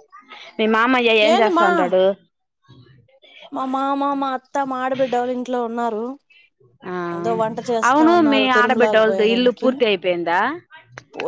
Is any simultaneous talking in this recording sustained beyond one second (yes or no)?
yes